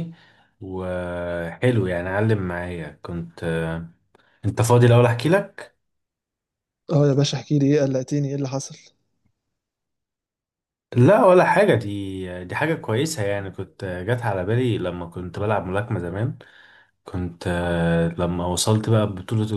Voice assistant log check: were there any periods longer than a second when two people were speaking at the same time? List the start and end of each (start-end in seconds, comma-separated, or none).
none